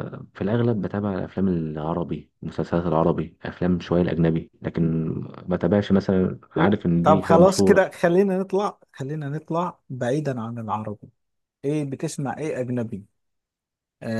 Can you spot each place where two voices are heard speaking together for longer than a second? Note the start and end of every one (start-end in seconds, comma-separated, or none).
6.5-7.8